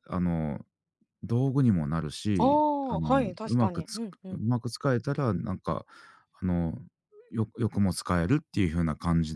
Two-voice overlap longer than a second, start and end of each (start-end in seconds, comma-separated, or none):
2.4-4.4